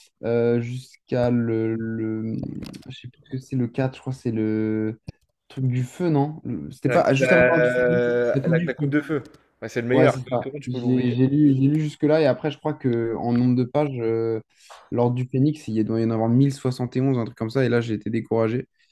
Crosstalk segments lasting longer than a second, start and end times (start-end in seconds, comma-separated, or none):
6.8-9.0